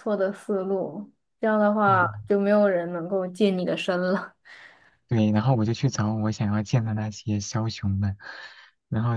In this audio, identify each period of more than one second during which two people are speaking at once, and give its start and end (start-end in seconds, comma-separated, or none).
none